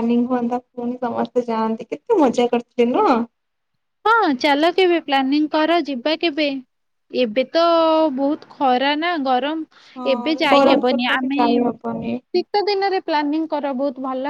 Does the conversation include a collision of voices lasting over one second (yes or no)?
yes